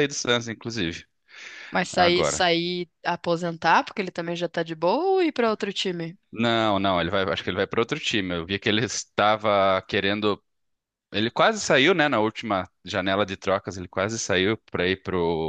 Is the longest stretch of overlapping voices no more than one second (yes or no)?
yes